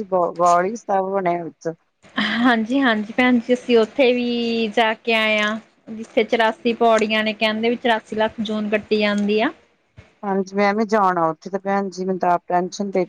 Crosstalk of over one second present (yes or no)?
no